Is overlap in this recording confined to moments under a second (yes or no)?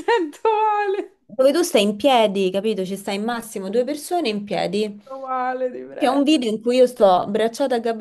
yes